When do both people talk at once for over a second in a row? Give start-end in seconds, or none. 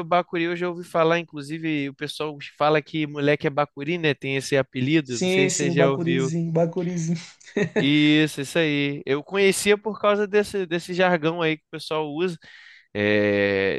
5.0-6.3